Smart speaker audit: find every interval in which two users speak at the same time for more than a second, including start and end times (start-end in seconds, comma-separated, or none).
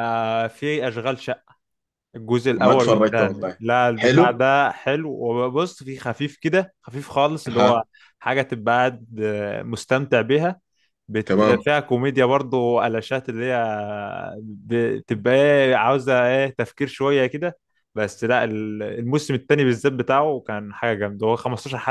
2.6-4.4